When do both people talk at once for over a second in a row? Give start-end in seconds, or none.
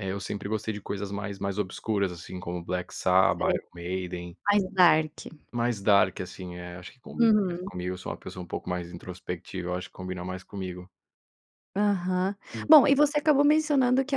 none